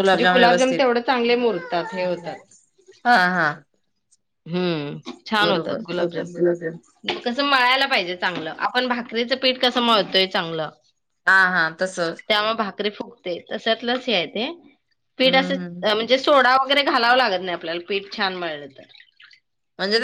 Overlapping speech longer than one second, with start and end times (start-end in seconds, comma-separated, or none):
none